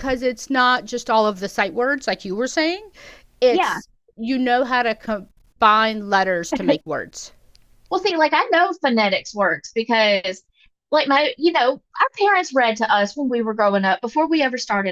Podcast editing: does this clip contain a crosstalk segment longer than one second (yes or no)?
no